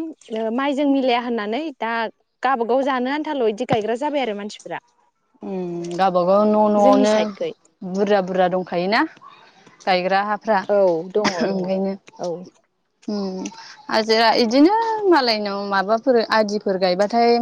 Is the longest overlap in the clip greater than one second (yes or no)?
no